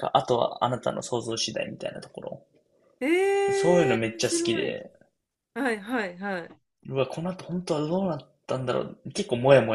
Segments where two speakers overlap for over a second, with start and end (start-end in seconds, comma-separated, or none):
3.5-4.8